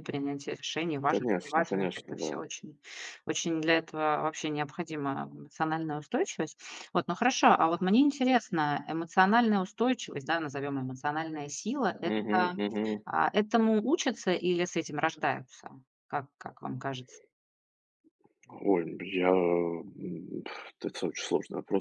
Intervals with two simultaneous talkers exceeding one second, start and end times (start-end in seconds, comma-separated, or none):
1.1-2.4